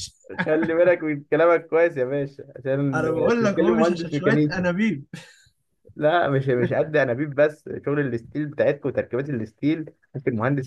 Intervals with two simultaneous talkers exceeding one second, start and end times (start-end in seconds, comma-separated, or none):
2.9-4.7